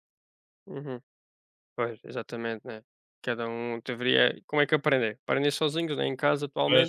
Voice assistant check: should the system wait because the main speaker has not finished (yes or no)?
yes